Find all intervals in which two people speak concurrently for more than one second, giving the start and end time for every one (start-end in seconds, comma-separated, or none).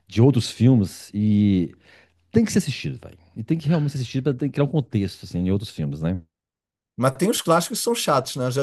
none